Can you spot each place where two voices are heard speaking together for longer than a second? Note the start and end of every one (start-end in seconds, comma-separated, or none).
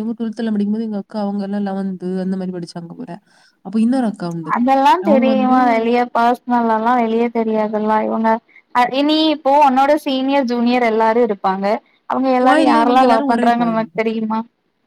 12.4-14.1